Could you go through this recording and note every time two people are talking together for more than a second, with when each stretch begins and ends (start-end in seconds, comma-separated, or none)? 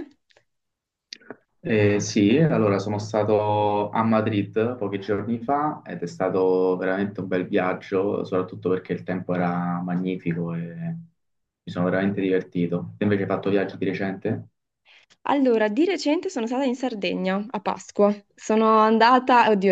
none